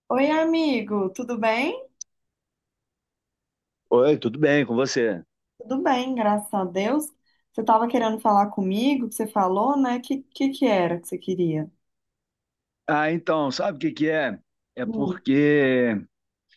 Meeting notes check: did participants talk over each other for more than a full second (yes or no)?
no